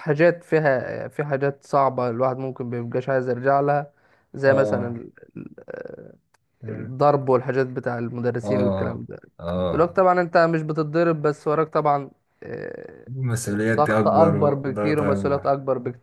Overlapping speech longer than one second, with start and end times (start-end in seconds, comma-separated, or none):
13.4-15.5